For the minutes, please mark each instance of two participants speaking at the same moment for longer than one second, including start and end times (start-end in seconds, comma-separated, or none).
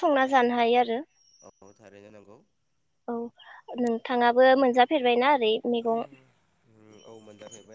none